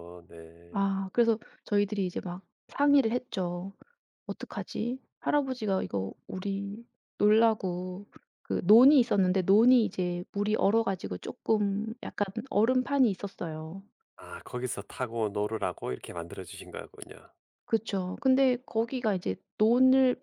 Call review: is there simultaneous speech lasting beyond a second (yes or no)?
no